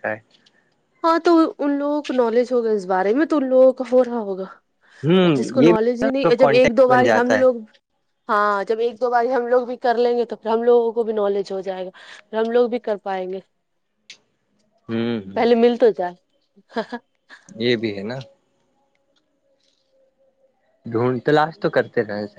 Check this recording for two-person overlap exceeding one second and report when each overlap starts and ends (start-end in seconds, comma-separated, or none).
5.2-7.4